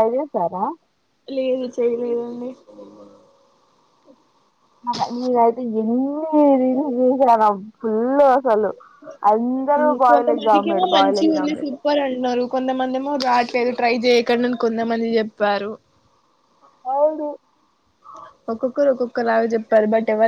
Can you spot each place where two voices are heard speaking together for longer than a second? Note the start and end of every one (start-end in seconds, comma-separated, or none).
10.1-11.7